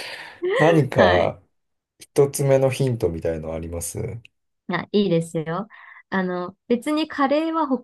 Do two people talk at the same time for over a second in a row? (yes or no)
no